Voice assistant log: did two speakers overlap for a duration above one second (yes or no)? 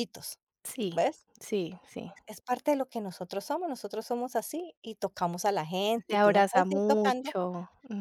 yes